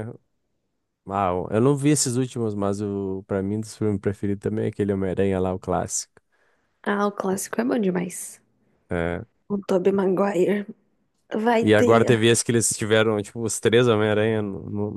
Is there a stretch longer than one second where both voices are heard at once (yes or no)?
no